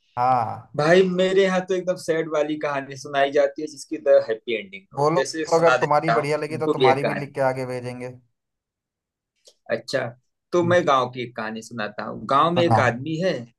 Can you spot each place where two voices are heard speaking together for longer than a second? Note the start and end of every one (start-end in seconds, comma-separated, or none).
5.0-7.3